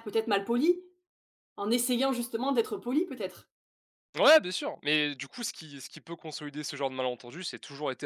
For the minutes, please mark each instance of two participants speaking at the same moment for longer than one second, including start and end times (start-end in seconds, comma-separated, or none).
none